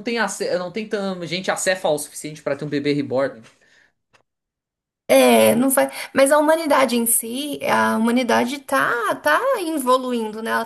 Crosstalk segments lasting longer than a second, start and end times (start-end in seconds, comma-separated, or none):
none